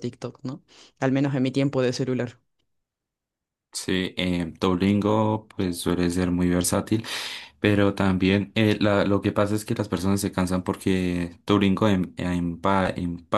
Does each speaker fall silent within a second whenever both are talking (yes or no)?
yes